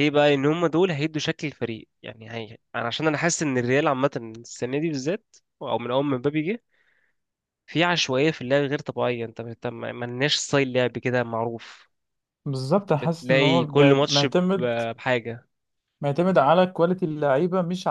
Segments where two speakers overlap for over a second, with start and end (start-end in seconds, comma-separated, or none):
12.9-14.3